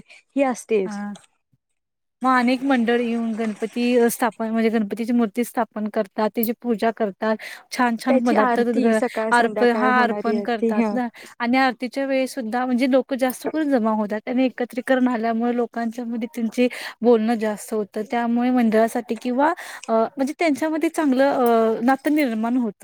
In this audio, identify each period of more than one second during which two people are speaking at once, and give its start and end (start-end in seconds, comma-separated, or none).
9.4-10.9